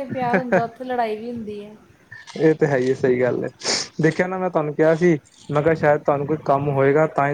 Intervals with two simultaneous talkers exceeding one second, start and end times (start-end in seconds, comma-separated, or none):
none